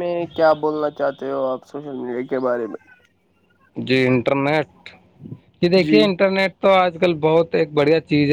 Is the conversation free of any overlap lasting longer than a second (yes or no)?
yes